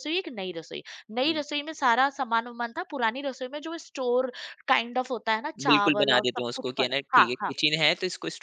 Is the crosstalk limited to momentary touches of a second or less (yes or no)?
no